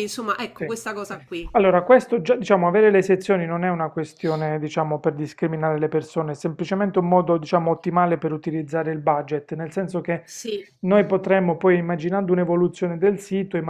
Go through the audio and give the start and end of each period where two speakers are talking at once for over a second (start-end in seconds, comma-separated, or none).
none